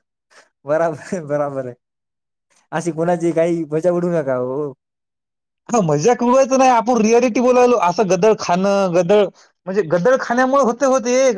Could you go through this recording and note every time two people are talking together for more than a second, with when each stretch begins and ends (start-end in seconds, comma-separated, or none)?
none